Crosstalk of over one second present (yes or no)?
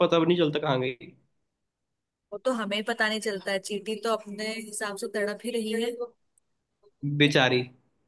no